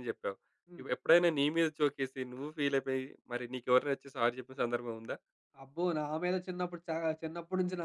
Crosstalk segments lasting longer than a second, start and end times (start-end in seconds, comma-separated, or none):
none